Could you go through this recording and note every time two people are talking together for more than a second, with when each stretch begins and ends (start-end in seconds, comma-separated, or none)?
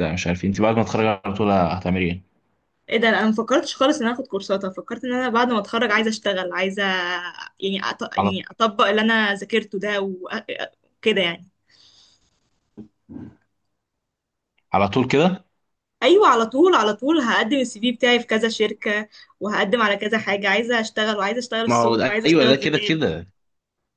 21.7-23.0